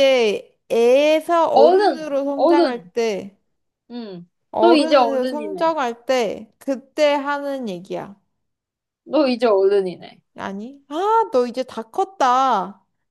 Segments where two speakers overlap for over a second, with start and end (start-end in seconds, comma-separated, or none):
1.5-2.9, 4.5-5.7